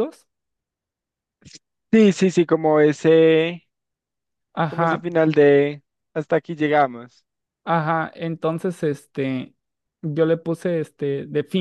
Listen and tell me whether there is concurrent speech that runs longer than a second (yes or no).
no